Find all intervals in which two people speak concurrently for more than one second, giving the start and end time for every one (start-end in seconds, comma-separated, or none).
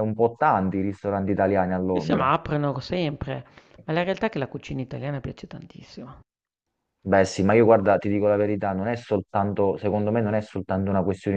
none